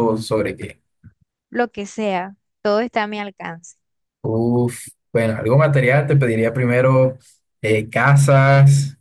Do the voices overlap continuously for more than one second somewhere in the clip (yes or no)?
no